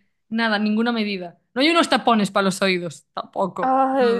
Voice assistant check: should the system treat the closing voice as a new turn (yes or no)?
yes